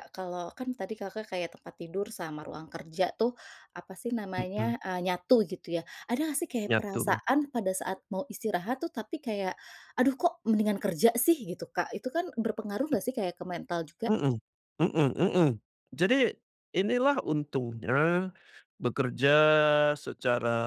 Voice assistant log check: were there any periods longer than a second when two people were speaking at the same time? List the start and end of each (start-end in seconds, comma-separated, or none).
none